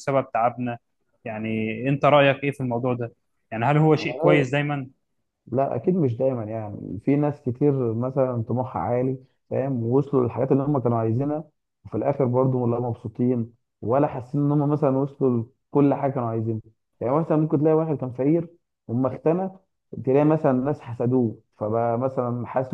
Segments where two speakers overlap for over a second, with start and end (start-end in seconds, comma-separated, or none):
none